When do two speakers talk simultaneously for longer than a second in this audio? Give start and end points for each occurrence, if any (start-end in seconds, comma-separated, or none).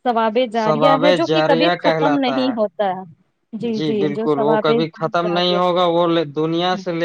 0.6-2.6